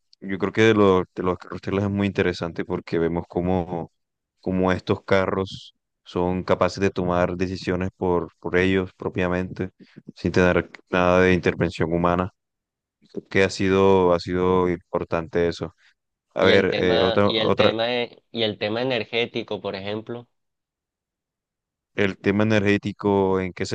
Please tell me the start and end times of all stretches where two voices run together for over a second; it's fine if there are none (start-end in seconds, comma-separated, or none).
16.4-17.7